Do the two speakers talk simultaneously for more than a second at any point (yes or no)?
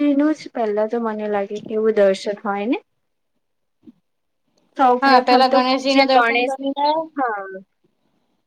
yes